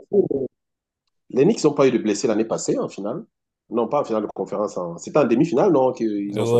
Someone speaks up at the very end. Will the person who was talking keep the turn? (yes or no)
no